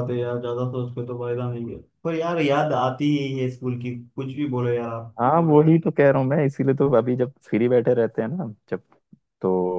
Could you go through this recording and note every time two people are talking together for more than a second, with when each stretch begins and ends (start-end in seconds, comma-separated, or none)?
none